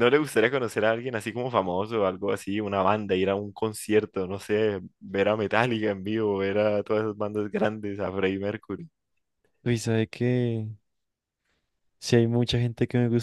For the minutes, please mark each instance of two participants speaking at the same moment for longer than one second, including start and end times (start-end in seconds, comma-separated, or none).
none